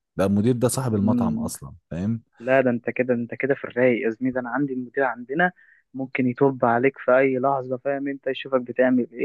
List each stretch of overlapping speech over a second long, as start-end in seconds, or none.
none